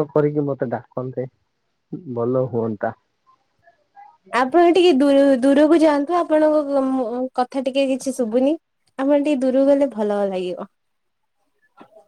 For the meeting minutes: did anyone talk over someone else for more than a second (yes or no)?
no